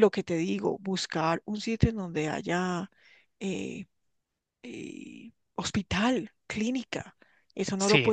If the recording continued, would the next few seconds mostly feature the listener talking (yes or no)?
yes